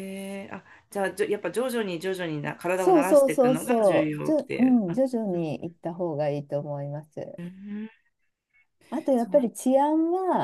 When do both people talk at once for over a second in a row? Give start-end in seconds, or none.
2.8-5.5